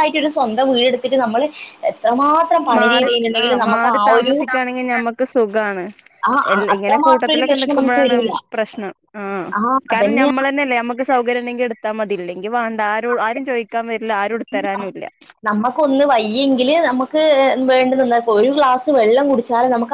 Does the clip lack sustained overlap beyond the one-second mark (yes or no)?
no